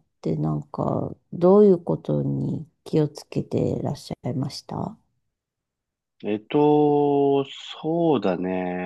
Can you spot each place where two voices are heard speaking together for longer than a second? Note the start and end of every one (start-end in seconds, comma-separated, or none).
none